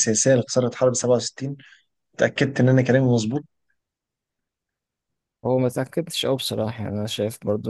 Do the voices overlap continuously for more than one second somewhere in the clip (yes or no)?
no